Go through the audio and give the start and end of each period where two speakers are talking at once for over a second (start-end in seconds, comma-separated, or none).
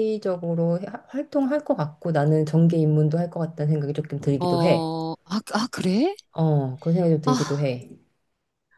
none